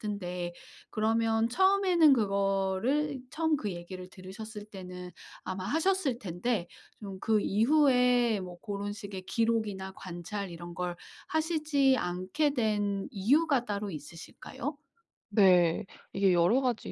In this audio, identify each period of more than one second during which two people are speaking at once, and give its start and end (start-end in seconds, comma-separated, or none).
none